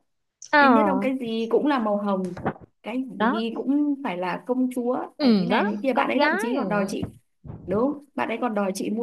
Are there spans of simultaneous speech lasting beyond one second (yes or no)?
yes